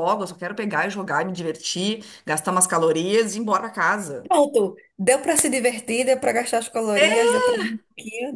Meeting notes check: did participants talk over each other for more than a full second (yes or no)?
no